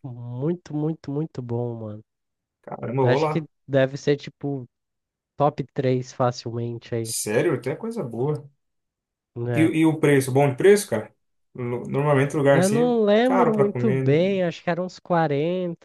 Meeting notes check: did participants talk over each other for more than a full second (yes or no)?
yes